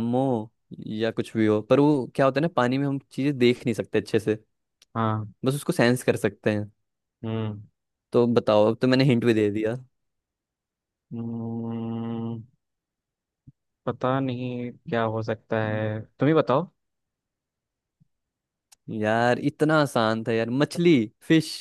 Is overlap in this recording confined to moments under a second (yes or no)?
yes